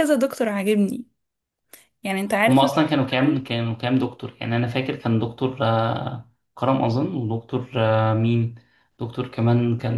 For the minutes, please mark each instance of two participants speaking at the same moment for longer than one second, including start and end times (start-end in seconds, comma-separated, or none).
none